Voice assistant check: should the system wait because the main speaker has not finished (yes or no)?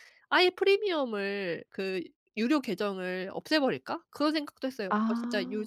yes